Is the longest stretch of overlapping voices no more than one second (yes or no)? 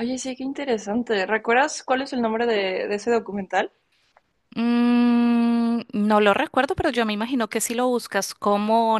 yes